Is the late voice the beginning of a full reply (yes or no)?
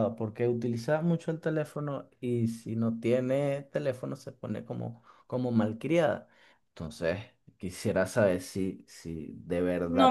yes